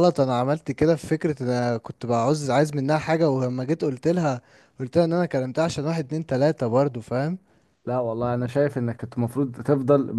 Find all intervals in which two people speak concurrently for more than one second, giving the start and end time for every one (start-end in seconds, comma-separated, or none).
none